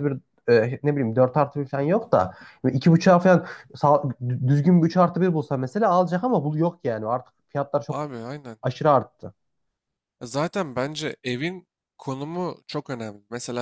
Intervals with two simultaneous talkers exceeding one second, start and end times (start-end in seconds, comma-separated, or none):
none